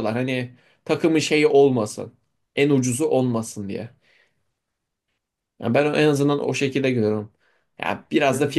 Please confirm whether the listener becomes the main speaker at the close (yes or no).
no